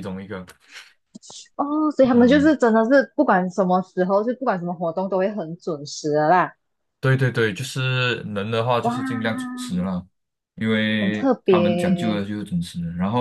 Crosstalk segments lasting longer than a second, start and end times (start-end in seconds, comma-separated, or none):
11.0-12.2